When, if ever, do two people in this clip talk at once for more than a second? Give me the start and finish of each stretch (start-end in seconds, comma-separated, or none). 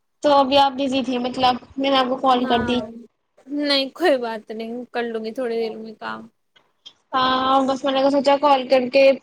none